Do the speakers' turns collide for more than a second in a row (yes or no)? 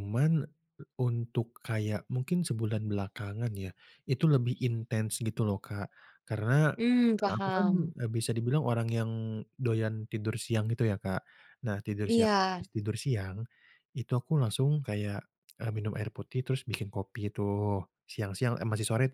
no